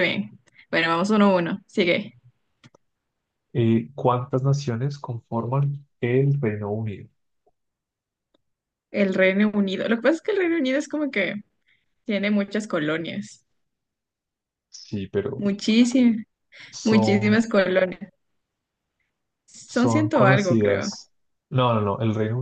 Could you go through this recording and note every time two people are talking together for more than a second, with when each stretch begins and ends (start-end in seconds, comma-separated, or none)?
19.6-20.9